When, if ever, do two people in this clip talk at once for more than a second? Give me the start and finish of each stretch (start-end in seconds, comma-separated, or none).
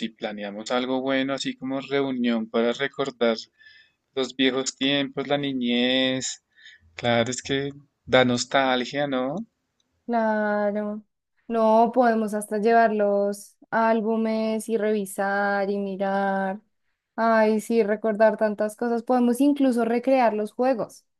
none